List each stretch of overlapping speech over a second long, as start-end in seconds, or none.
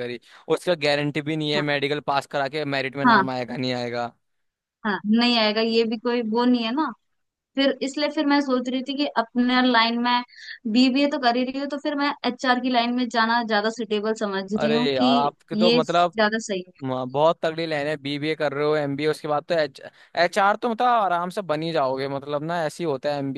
14.6-16.1